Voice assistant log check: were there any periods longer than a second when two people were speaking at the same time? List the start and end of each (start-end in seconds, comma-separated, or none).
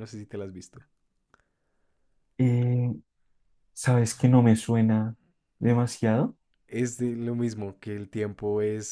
none